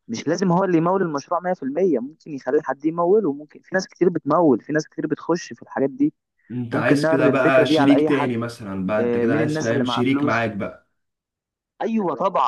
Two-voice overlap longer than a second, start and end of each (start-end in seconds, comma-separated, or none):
6.7-8.3, 9.0-10.5